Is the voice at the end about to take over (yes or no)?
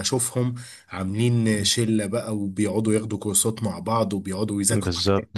no